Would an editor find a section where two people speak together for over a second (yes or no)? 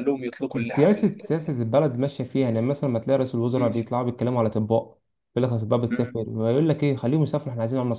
no